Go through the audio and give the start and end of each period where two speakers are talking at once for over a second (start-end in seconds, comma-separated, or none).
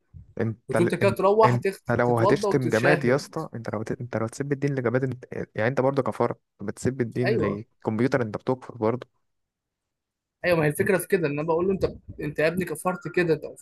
0.7-3.3